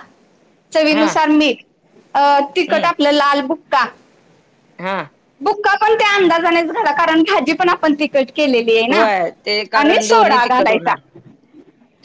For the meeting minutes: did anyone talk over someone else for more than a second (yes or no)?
yes